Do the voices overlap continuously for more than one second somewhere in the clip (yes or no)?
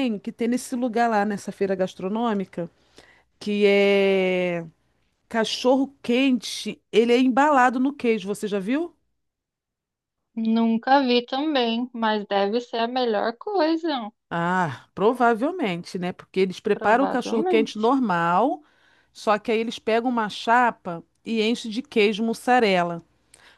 yes